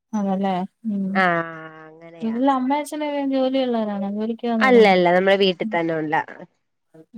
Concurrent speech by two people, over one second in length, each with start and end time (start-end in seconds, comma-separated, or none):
none